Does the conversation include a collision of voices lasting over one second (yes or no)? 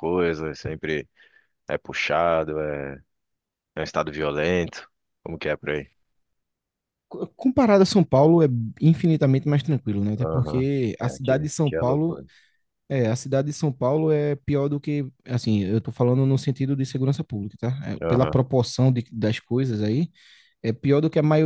yes